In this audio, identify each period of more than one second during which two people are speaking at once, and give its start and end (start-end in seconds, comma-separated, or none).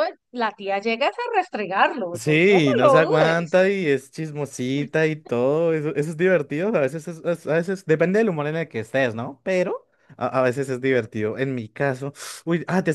2.1-3.6